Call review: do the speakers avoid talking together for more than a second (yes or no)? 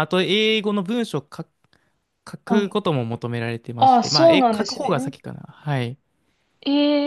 no